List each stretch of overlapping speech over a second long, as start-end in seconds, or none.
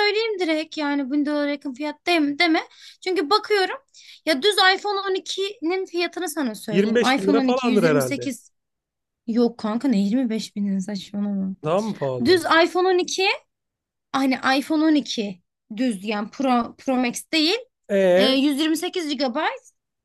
6.7-8.3